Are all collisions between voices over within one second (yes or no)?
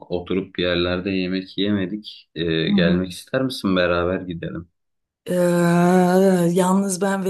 yes